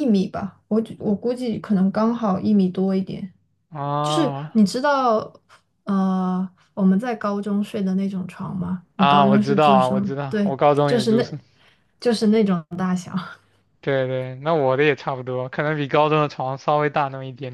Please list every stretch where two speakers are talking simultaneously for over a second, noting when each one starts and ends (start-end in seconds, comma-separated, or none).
9.0-11.3